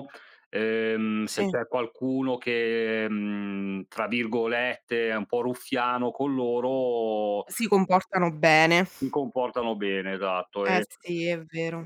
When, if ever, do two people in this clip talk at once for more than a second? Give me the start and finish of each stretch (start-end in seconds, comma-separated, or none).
none